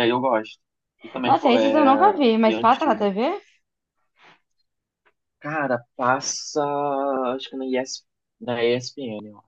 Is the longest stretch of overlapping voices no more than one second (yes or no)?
no